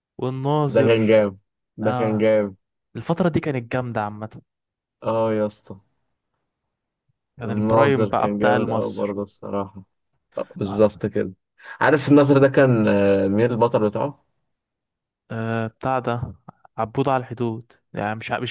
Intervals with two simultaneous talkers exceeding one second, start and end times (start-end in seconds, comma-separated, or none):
7.5-9.2